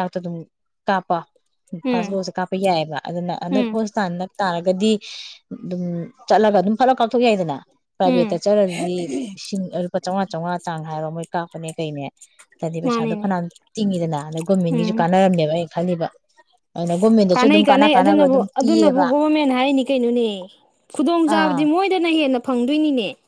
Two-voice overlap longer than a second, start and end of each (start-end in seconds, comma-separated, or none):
17.3-19.1